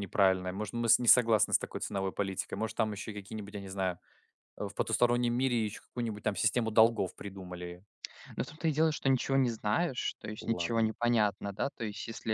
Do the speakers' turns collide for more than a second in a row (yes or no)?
no